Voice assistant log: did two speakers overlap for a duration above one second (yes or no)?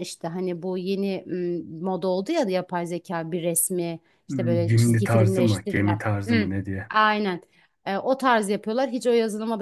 yes